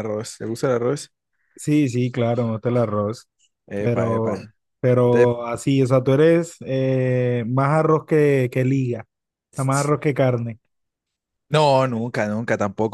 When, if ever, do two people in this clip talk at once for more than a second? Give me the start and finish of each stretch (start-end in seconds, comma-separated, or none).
none